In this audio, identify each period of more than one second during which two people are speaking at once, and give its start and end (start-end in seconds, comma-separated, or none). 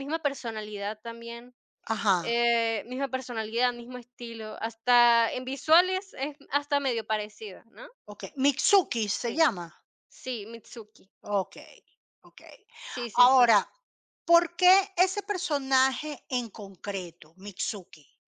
none